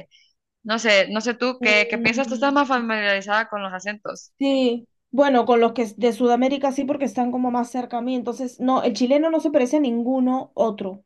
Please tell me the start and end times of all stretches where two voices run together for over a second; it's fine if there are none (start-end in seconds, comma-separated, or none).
1.6-2.9